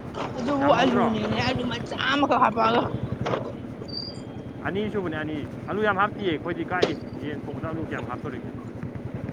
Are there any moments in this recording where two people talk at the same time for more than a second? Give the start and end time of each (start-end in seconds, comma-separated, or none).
none